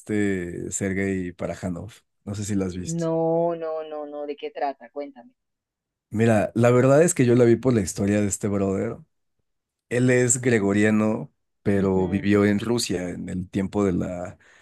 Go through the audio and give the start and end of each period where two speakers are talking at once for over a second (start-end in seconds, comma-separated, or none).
none